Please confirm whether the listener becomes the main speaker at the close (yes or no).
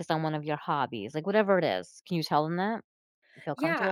yes